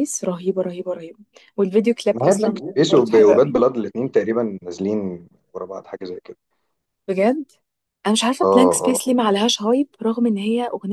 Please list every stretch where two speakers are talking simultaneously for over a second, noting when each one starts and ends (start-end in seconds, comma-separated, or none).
2.1-3.6